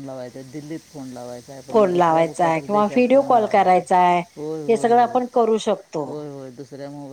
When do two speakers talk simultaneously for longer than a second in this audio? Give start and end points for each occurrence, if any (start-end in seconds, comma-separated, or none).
1.7-3.8